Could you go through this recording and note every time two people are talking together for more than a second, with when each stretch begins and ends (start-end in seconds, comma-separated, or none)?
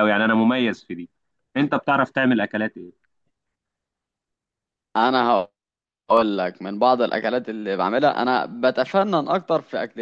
none